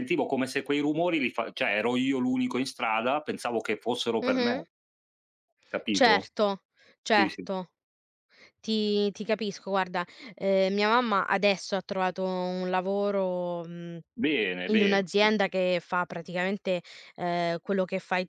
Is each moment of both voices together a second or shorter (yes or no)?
yes